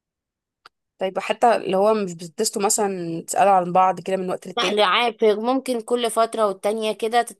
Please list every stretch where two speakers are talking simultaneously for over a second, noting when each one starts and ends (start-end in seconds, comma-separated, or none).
none